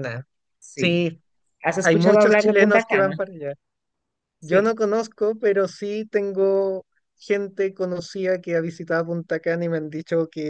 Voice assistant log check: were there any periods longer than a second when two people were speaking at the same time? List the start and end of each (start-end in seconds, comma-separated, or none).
1.8-3.2